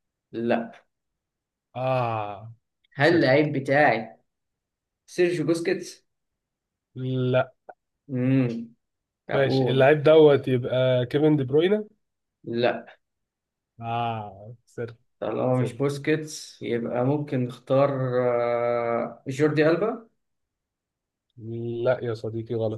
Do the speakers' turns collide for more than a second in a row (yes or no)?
no